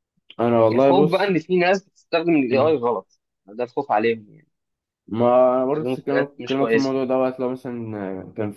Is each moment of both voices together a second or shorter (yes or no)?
no